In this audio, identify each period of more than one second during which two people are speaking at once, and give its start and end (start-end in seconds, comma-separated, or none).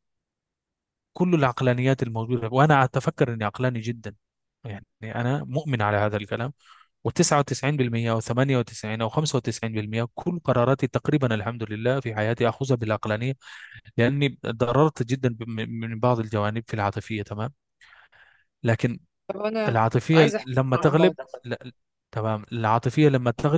19.7-21.4